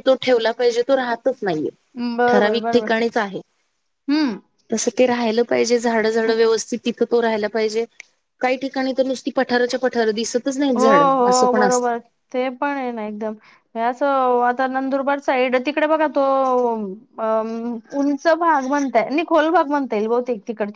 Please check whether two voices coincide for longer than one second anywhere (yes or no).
no